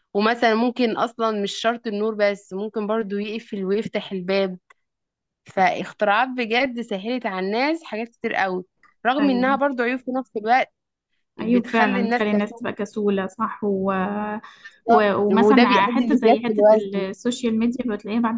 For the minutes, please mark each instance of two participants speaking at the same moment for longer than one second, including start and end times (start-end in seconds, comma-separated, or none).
11.4-12.6, 14.9-17.1